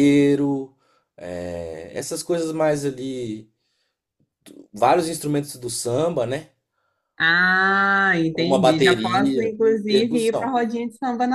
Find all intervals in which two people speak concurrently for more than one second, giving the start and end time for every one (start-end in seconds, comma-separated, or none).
8.3-10.6